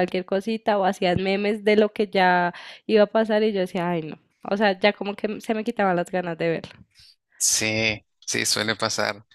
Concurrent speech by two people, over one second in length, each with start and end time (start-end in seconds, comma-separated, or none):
none